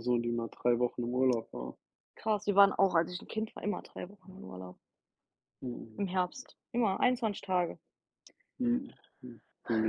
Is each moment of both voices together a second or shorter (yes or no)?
yes